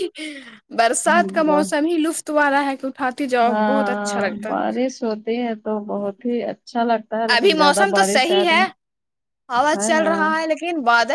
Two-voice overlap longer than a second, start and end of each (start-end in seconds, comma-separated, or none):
7.3-8.6